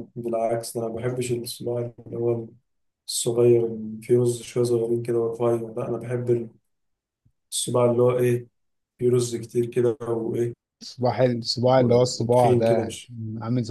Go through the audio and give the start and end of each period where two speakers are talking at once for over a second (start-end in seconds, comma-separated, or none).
11.8-13.1